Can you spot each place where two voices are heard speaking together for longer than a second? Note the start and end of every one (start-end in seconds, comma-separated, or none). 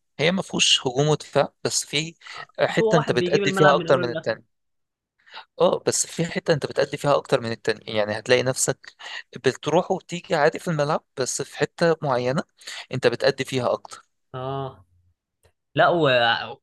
2.7-4.4